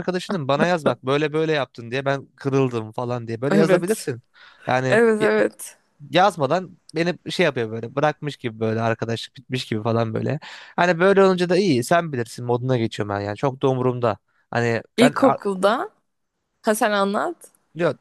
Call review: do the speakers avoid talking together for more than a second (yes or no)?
yes